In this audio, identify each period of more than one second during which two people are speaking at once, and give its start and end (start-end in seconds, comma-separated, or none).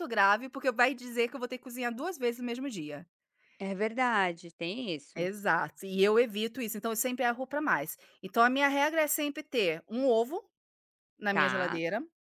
none